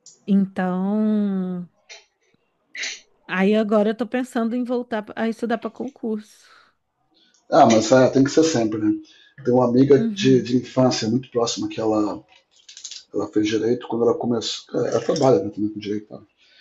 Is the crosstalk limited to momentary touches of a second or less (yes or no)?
yes